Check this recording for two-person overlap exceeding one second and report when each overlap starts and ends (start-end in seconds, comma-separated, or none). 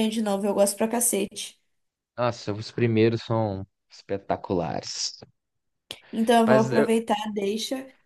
none